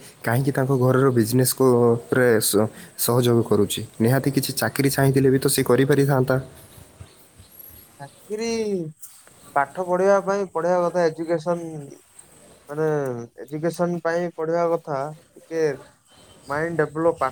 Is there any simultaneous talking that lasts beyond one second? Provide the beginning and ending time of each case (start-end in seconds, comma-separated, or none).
none